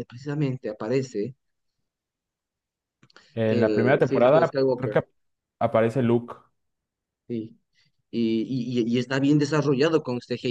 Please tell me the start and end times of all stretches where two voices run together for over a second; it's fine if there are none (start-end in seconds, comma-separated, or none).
3.5-5.0